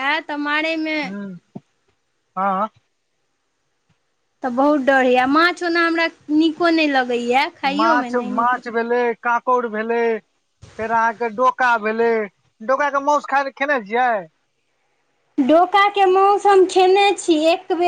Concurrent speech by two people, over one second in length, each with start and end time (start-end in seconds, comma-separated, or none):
none